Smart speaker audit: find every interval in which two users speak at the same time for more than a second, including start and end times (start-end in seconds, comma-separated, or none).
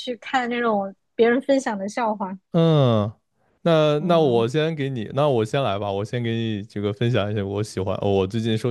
none